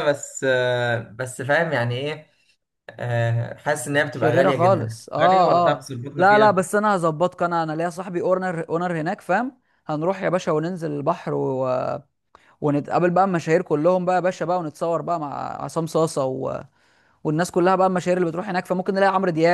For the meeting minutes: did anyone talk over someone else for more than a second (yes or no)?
yes